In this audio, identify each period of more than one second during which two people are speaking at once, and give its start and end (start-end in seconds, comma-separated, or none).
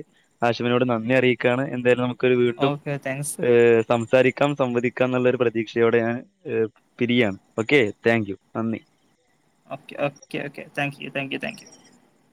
none